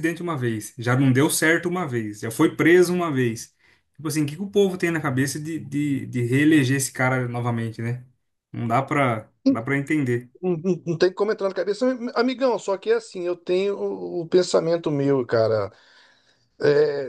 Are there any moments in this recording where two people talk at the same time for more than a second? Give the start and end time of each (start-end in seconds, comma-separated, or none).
none